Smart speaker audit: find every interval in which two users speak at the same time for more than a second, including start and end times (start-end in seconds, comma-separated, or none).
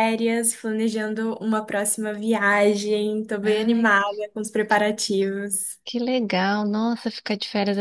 none